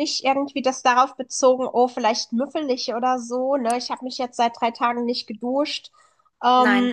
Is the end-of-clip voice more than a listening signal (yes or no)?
no